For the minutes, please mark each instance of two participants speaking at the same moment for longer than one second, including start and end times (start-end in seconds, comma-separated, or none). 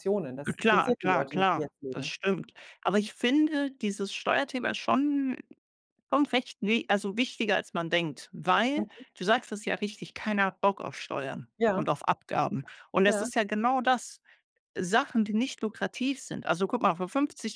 0.6-2.1